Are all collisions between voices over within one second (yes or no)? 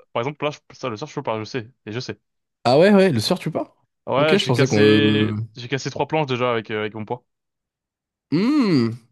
no